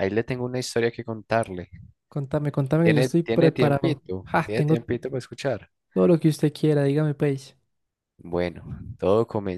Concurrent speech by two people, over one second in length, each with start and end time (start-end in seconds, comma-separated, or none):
2.8-4.7